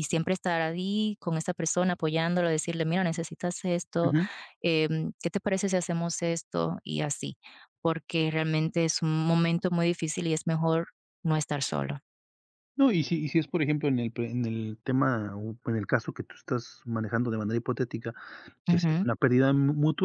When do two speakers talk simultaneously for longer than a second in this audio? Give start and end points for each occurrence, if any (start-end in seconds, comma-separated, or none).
none